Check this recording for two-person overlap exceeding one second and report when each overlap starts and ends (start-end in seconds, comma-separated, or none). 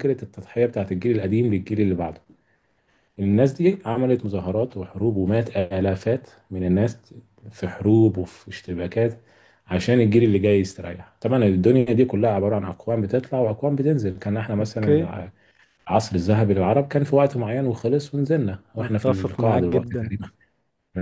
18.8-20.1